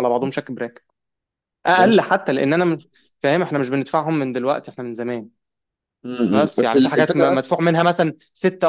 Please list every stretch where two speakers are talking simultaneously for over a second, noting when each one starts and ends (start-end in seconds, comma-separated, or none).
6.3-7.5